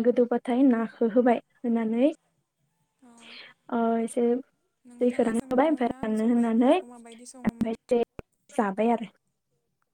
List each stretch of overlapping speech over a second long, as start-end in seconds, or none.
5.0-7.8